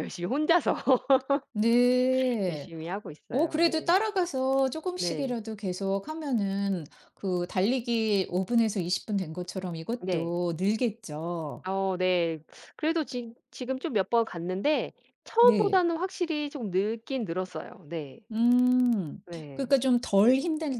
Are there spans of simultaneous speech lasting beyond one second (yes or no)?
no